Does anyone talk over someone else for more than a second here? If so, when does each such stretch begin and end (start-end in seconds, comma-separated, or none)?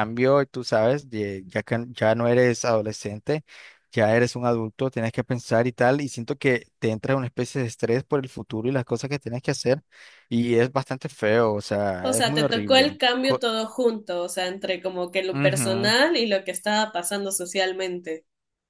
12.0-13.4